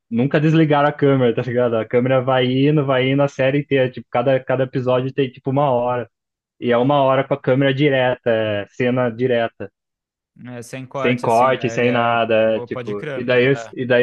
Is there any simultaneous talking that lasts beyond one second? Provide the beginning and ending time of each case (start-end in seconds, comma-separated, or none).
11.0-13.2